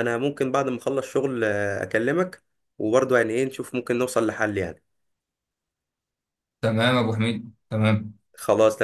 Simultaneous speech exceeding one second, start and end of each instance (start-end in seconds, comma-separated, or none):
none